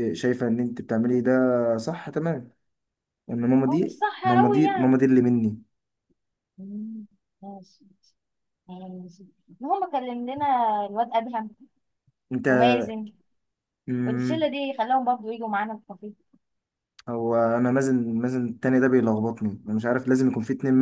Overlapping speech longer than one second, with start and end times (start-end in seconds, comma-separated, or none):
3.7-5.0